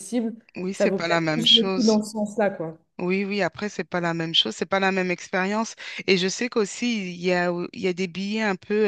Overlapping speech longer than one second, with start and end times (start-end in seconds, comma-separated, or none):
0.7-2.0